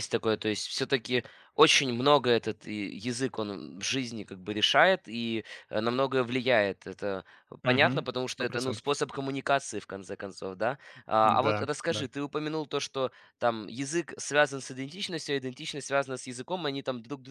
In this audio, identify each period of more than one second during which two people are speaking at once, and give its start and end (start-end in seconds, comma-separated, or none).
7.6-8.9